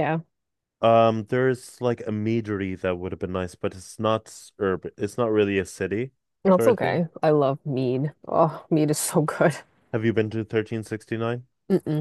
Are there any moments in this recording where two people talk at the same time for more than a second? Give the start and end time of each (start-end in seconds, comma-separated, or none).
none